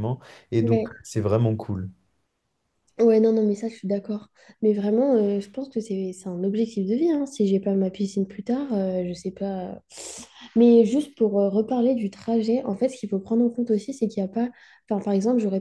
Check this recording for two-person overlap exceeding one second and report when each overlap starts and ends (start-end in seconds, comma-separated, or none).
none